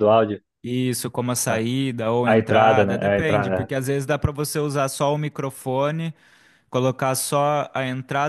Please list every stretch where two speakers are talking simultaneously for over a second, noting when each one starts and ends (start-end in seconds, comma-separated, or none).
2.2-3.7